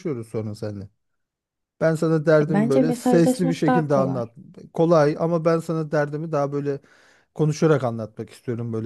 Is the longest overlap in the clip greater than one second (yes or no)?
yes